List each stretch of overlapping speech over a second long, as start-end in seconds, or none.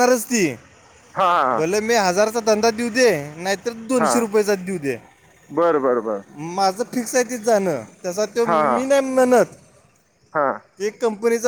none